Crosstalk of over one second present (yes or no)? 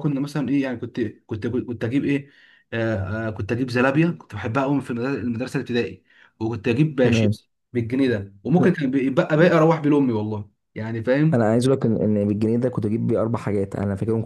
no